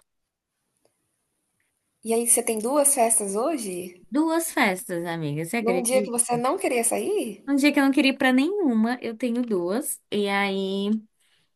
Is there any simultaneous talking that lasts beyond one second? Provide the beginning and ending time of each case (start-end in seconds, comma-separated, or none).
none